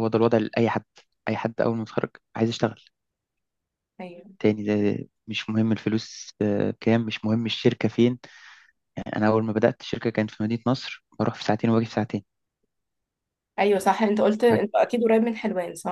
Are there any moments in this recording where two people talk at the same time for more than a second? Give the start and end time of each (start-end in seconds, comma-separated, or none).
none